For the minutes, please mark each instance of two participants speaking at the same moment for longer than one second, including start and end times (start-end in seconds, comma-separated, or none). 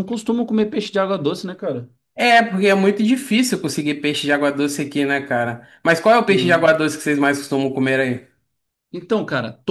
none